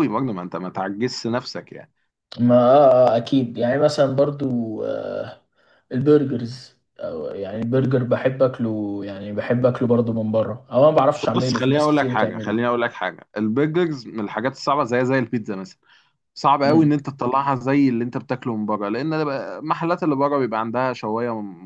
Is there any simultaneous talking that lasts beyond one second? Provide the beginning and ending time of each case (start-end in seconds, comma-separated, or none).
11.3-12.6